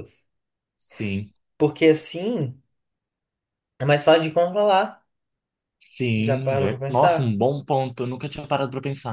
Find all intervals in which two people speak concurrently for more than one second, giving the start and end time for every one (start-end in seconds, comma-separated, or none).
6.2-7.4